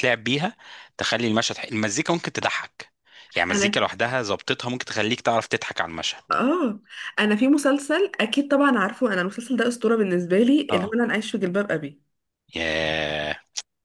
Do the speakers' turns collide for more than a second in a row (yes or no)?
no